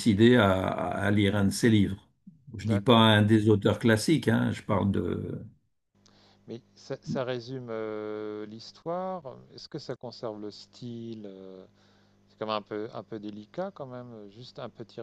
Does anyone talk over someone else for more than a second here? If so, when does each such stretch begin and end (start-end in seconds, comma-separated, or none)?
none